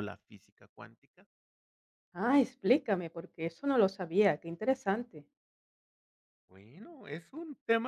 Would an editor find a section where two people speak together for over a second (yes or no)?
no